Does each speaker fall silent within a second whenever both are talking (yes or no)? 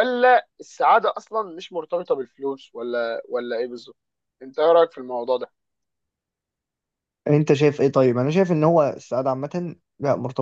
yes